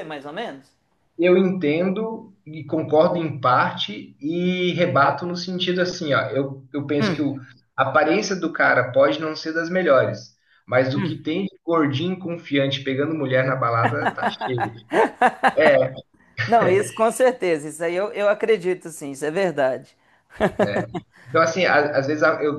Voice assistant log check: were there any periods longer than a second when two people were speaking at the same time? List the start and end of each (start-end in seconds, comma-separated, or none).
none